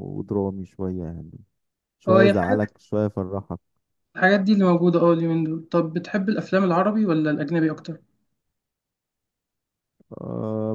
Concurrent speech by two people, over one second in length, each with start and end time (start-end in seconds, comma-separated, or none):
none